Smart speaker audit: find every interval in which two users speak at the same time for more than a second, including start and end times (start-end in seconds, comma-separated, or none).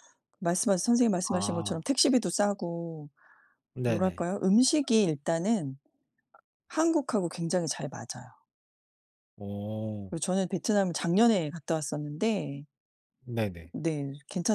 none